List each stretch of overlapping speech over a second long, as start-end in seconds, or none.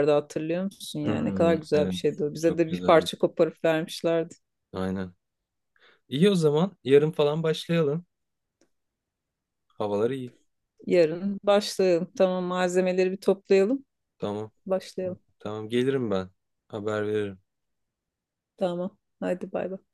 1.0-3.1